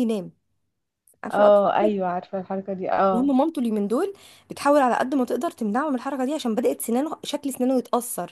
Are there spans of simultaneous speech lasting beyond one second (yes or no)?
no